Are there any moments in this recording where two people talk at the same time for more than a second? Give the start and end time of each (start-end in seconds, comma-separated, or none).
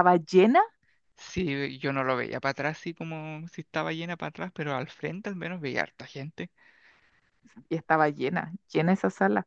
none